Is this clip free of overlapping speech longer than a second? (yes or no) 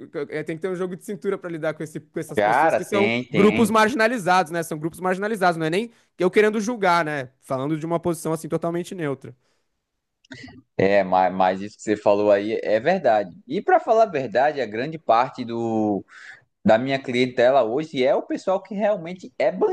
no